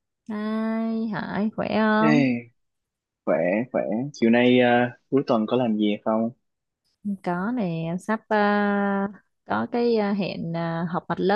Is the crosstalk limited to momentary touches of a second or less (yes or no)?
yes